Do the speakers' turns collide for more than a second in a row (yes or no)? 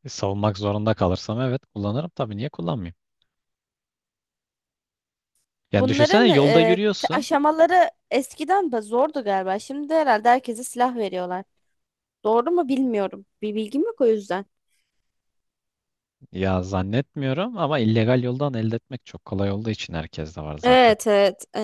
yes